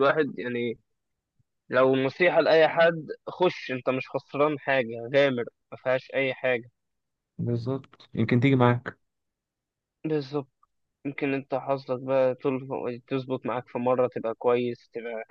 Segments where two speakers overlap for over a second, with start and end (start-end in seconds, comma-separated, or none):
none